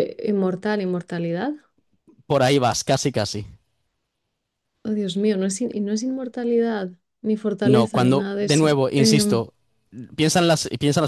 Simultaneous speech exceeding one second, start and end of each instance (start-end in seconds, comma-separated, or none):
7.6-9.4